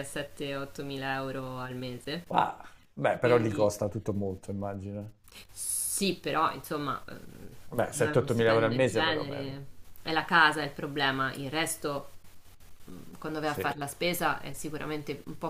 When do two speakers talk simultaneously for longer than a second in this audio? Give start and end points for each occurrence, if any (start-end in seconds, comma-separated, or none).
8.0-9.4